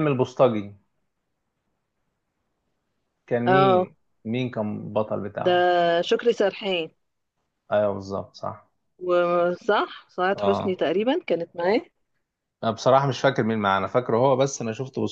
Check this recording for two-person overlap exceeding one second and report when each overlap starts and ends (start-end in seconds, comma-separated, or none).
none